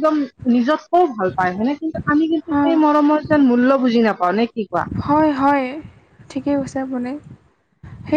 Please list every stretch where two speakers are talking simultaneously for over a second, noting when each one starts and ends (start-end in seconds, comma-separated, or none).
none